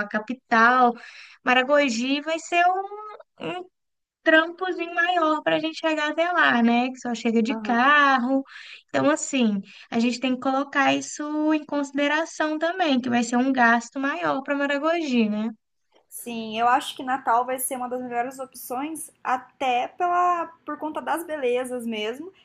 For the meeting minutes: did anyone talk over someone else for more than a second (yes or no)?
no